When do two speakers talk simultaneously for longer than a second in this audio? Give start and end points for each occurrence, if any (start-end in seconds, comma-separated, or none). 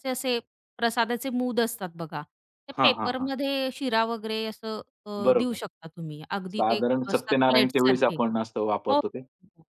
6.5-8.2